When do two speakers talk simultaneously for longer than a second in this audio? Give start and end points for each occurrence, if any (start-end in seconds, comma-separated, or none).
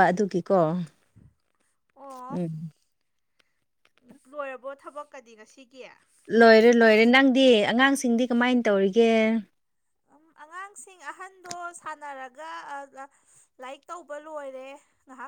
none